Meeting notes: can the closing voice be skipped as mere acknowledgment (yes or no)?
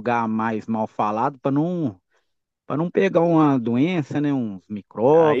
no